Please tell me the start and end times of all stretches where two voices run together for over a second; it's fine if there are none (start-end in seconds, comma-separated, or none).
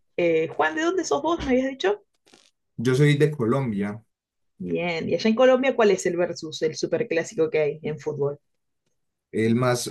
none